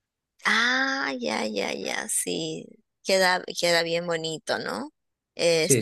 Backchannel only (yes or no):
yes